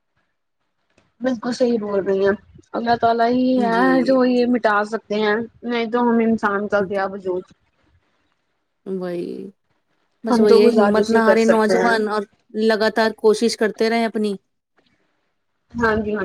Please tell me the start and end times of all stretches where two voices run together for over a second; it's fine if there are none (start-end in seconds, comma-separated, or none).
10.3-11.9